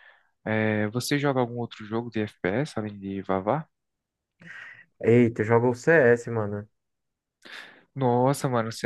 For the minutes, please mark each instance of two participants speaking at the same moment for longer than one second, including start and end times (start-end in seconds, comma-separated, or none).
none